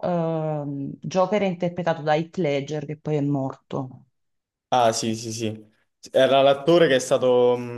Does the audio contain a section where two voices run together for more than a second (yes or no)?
no